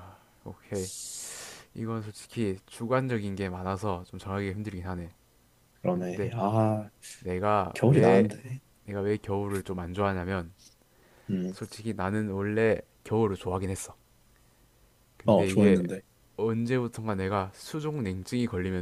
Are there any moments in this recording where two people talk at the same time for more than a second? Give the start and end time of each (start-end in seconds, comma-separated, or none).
none